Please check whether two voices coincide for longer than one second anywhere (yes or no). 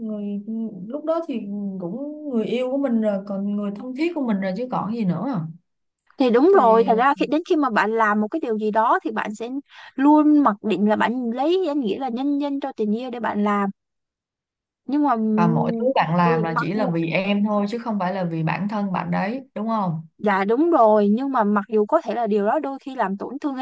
yes